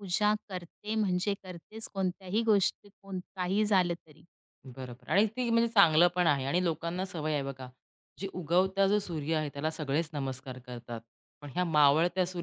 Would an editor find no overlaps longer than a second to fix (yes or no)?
yes